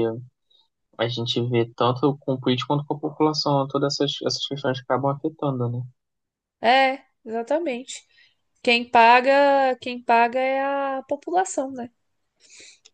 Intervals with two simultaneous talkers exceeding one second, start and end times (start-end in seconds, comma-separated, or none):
none